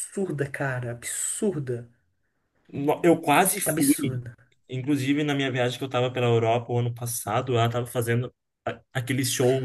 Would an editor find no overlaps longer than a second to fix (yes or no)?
yes